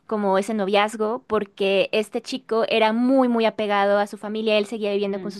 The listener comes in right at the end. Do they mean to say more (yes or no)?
no